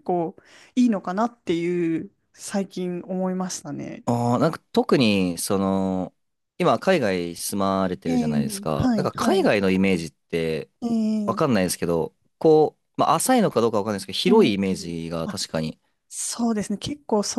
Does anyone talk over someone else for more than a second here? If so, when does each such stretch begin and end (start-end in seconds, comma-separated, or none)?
8.1-9.5